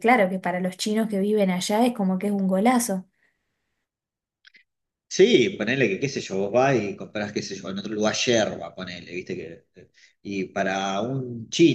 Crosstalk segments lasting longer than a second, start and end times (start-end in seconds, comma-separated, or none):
none